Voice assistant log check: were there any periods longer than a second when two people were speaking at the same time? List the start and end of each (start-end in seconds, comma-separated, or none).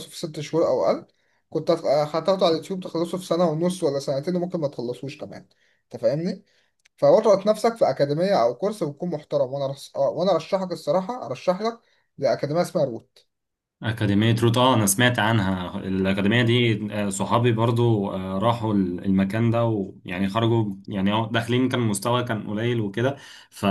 none